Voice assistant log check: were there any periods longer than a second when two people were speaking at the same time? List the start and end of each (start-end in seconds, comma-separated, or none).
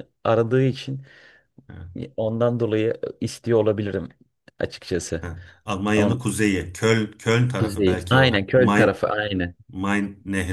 7.6-9.0